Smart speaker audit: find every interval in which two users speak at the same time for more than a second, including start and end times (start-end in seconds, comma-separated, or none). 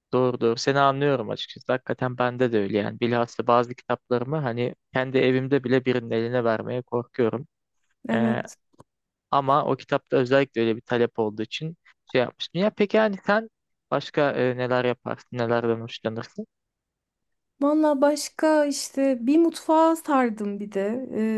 none